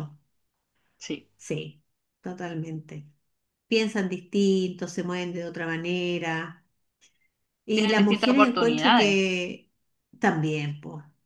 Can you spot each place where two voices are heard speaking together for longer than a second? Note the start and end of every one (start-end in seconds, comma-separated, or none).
7.7-9.2